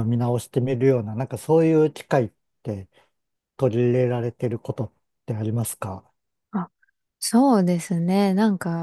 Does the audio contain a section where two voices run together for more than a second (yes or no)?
no